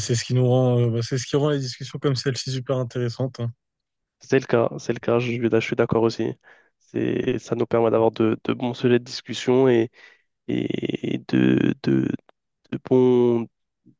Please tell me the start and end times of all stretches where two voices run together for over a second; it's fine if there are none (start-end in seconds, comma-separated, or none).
none